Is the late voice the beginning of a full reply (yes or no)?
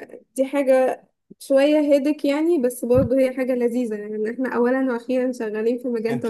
yes